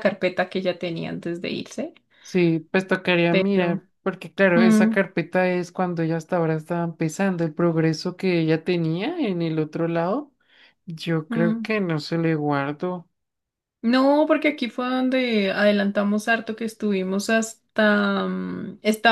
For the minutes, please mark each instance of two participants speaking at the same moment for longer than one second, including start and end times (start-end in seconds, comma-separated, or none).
none